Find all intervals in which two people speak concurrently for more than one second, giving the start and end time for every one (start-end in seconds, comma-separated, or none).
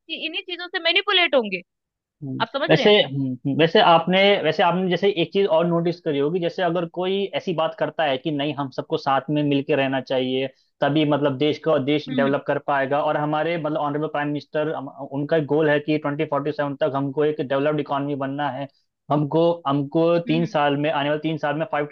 none